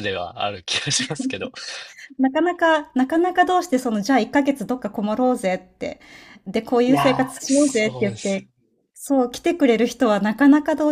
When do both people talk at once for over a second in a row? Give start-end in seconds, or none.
6.9-8.4